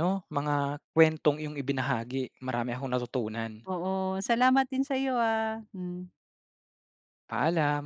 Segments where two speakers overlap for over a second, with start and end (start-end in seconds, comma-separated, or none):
none